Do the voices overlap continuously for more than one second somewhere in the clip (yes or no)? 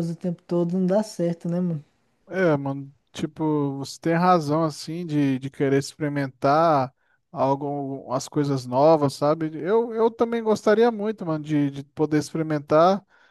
no